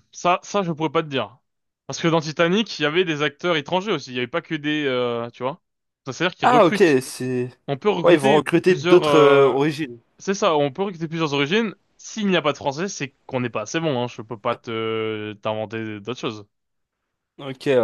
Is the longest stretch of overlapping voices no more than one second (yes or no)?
no